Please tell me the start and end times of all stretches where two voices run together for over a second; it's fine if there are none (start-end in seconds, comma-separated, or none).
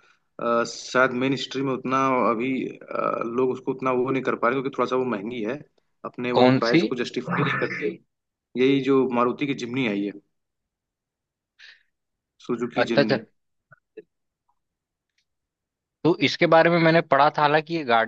none